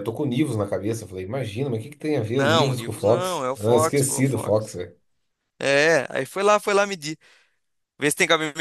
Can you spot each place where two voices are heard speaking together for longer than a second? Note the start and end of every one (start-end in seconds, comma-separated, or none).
2.4-4.7